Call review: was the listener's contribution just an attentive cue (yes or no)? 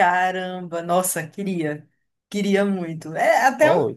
yes